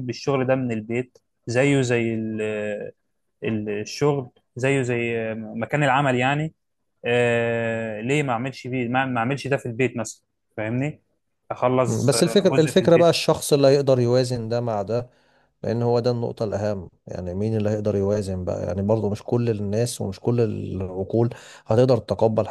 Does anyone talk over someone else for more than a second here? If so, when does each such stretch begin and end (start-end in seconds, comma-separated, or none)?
11.8-13.1